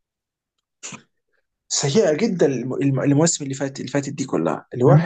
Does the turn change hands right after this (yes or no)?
yes